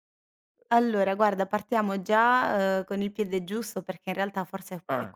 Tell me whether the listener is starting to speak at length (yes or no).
no